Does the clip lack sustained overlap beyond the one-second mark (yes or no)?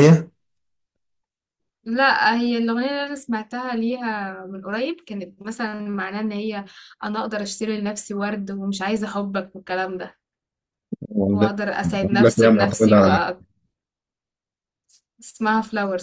no